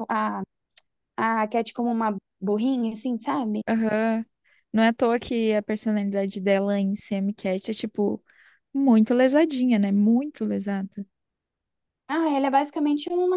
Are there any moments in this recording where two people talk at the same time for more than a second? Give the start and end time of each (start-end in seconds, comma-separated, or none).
none